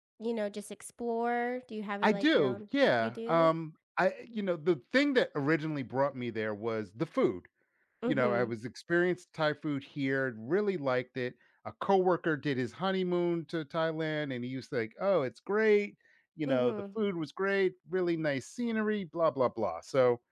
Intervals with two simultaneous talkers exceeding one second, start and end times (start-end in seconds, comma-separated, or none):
2.0-3.5